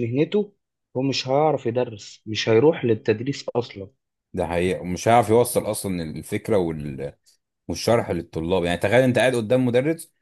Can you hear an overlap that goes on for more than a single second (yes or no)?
no